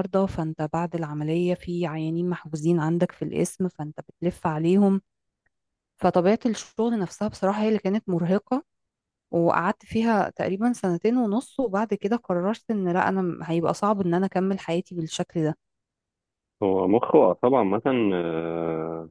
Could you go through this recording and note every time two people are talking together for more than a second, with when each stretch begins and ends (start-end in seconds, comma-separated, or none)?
none